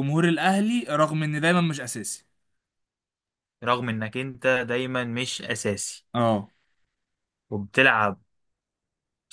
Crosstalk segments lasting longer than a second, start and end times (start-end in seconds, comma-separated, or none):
none